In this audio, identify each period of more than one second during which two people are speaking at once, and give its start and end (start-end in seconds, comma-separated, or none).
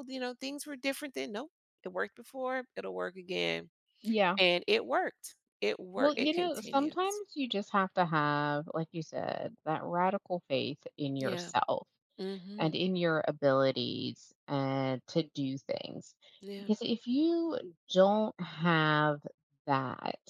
6.0-7.2